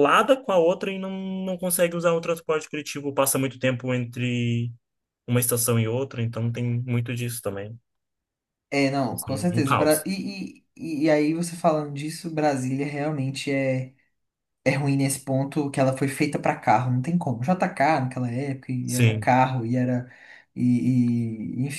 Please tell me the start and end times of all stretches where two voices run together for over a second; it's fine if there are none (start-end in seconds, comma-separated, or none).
none